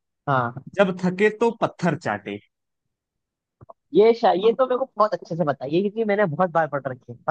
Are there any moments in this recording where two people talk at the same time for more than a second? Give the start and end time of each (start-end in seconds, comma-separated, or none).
none